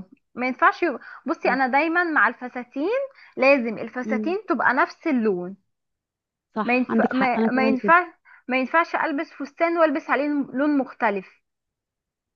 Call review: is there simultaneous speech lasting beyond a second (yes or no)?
yes